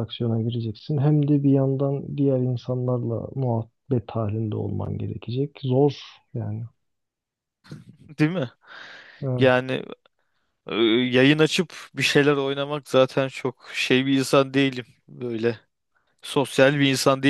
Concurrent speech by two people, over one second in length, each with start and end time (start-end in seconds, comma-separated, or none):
none